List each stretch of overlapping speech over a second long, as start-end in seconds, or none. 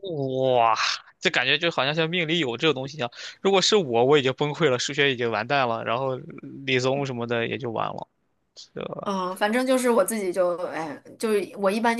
none